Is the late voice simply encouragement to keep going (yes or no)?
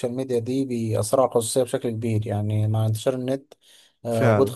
yes